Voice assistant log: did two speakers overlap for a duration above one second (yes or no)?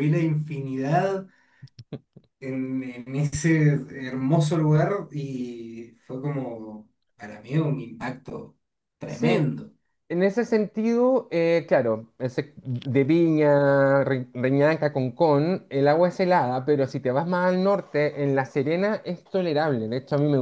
no